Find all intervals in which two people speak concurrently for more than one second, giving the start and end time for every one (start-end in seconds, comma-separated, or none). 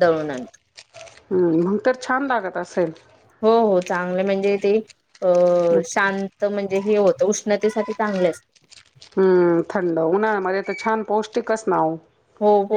none